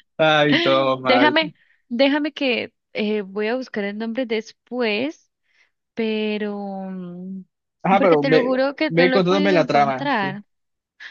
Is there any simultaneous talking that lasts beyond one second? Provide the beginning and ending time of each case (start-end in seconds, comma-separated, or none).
8.0-10.3